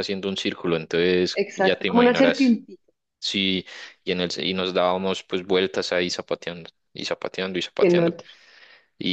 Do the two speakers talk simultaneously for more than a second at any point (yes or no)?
yes